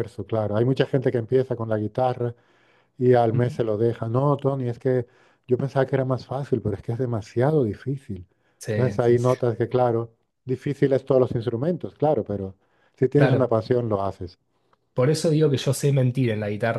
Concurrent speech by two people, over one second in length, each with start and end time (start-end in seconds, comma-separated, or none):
none